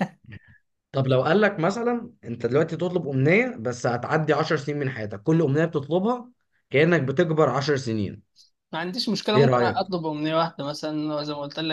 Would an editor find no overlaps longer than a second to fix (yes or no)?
yes